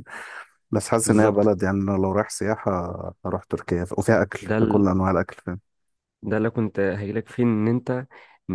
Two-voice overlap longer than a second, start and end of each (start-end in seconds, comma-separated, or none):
none